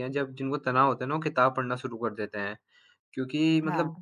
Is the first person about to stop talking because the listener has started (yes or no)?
no